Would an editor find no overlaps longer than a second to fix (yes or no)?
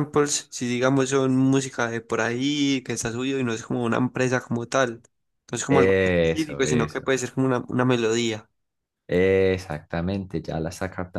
no